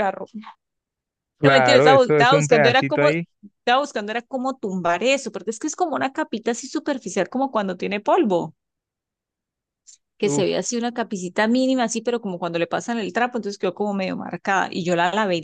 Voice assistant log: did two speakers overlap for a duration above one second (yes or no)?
yes